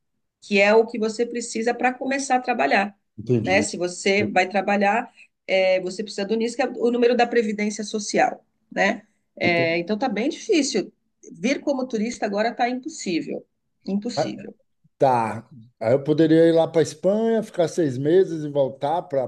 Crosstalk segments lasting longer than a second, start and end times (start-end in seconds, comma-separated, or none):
none